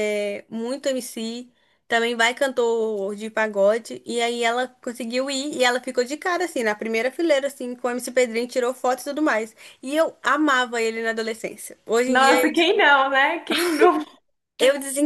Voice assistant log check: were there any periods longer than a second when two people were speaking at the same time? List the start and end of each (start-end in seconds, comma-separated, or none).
none